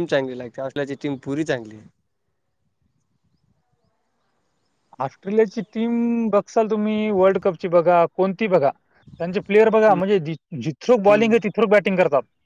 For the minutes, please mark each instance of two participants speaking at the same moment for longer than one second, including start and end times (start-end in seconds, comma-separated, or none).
none